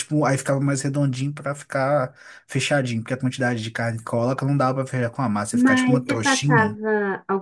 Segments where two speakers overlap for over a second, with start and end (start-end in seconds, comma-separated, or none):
5.5-6.8